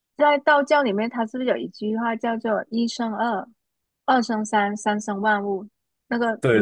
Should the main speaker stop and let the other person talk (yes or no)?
yes